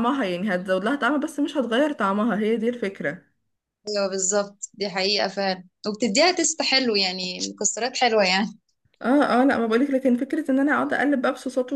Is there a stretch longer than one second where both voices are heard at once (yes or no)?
no